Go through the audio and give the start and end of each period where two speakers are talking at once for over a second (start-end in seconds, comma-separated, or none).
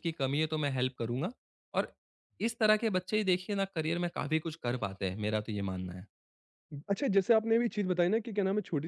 none